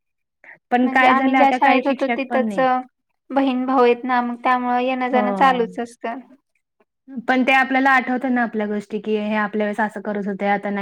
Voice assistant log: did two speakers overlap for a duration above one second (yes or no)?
yes